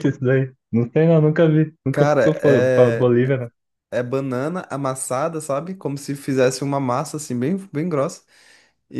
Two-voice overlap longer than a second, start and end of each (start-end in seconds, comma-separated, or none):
1.9-3.1